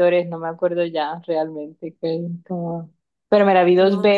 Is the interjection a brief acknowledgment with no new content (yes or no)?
yes